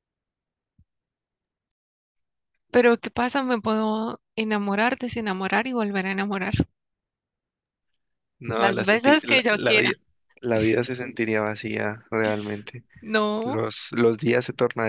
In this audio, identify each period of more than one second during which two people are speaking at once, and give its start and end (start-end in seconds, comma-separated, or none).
8.6-9.9